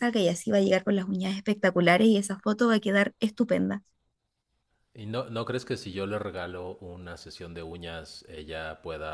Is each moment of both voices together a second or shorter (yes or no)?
yes